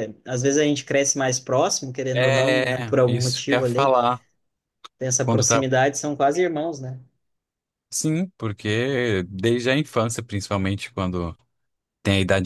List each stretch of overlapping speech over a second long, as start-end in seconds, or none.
2.1-3.9